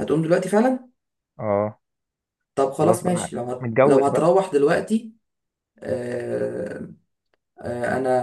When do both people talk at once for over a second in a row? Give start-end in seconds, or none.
2.8-4.3